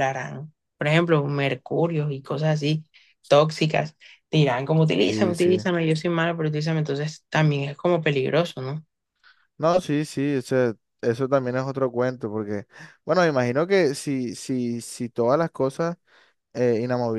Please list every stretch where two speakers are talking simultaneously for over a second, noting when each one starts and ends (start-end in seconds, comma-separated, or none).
none